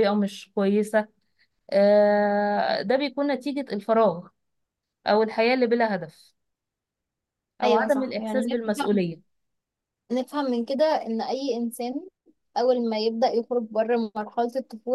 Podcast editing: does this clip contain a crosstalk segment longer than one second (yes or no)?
yes